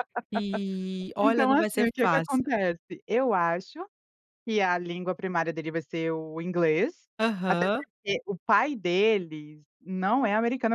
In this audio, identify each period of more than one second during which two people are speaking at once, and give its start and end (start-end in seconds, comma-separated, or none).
1.2-2.5